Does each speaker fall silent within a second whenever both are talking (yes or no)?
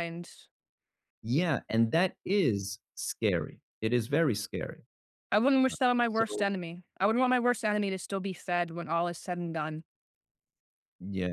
yes